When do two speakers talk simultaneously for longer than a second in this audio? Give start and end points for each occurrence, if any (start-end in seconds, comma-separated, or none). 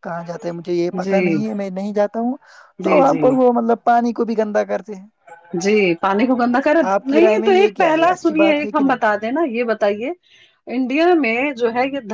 7.1-9.0